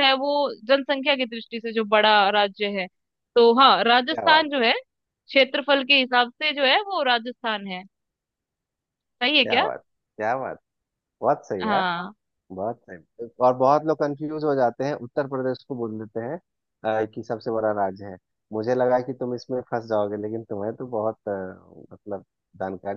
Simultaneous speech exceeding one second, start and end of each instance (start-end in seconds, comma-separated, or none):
none